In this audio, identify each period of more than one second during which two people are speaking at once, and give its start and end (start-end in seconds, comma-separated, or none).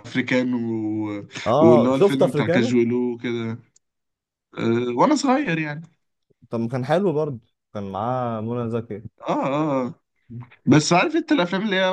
1.5-2.8